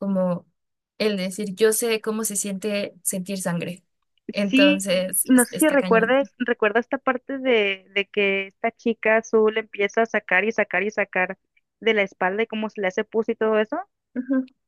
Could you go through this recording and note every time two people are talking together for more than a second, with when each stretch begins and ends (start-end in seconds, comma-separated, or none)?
4.5-6.2